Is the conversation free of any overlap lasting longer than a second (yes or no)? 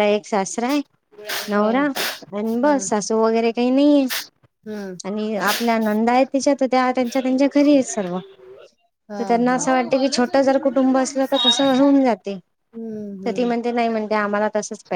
no